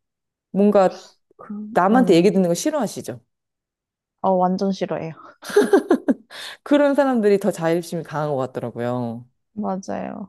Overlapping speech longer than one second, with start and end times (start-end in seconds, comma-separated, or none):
none